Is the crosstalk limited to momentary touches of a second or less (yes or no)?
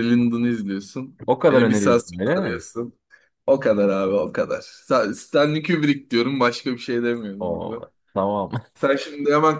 no